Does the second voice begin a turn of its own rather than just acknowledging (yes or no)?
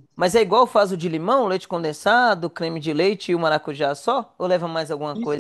yes